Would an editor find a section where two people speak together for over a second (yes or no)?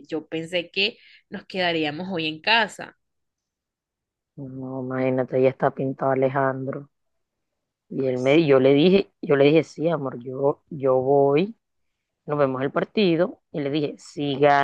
no